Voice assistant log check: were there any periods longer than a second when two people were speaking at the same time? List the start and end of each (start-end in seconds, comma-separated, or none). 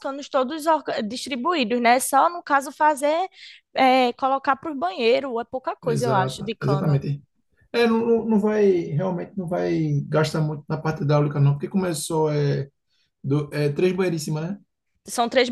5.8-7.0